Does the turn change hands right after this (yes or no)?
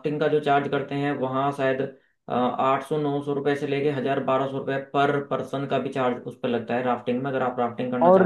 yes